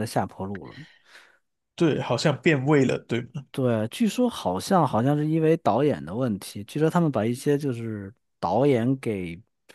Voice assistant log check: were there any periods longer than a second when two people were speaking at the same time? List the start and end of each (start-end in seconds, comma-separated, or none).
none